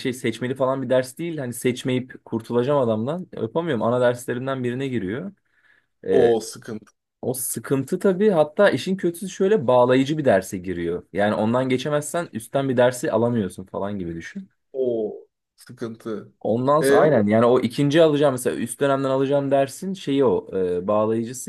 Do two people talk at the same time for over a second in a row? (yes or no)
no